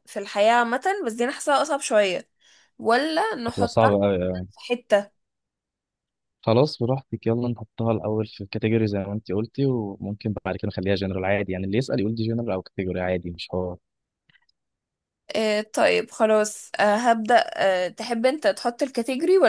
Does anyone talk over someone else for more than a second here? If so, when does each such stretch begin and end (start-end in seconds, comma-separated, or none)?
none